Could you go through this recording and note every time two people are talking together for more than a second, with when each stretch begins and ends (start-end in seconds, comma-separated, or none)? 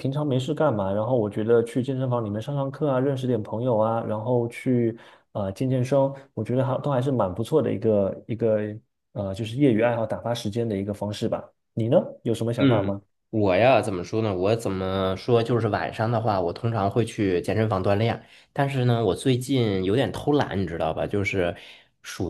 none